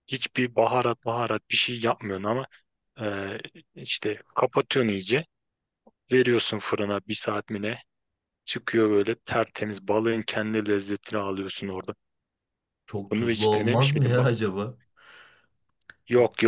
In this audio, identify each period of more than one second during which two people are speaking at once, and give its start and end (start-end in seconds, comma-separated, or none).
13.1-14.3